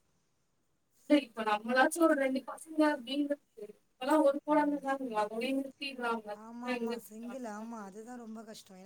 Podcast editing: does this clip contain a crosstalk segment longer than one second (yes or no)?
no